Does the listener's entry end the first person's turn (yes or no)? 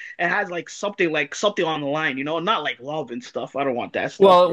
yes